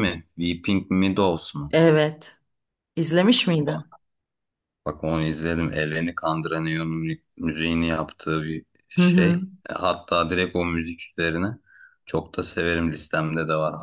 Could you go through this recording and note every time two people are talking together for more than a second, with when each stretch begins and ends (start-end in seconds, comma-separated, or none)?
none